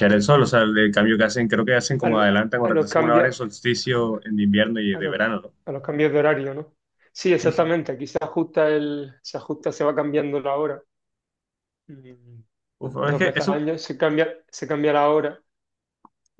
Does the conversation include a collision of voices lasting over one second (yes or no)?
yes